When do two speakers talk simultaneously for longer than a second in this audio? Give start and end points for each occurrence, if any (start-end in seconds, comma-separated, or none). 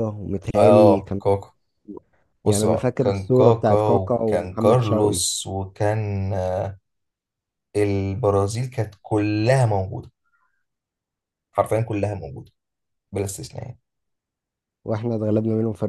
2.5-5.2